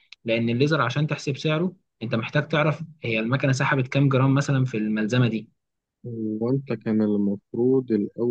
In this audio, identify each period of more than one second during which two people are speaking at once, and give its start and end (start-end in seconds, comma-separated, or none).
none